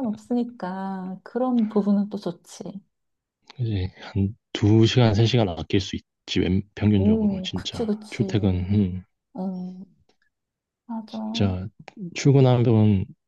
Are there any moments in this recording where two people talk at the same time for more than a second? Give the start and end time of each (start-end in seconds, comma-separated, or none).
7.0-8.2